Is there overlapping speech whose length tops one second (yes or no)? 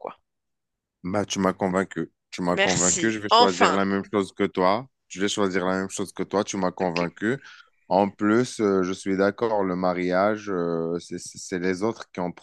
yes